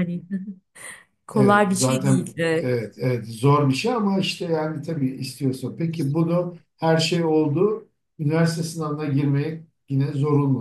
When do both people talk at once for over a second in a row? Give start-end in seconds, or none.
1.3-2.7